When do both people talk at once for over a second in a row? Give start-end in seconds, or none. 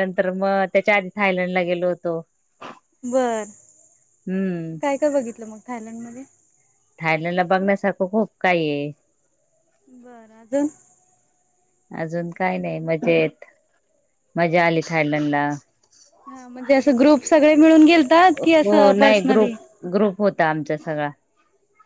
none